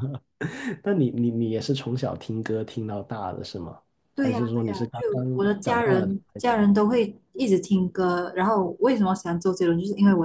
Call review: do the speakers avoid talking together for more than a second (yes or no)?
no